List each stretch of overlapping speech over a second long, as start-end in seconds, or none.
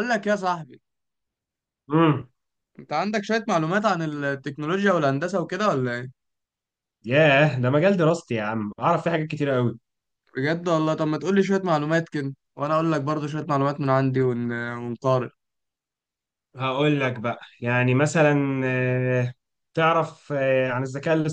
none